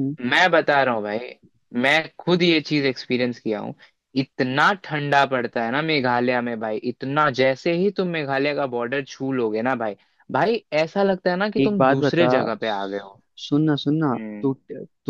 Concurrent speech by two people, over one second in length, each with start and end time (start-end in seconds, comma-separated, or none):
11.6-13.1